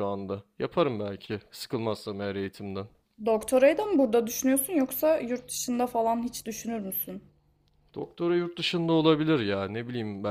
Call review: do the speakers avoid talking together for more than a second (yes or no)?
yes